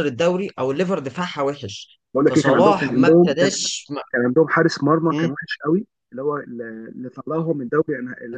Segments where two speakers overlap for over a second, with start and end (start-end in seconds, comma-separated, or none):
2.1-3.6